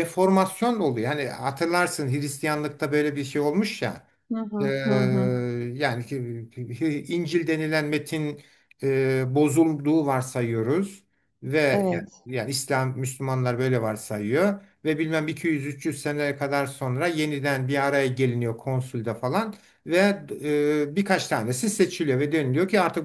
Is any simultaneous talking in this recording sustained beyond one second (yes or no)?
no